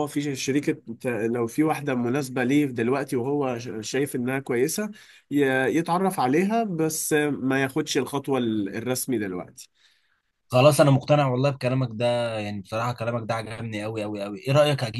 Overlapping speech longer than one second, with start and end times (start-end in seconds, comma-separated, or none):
none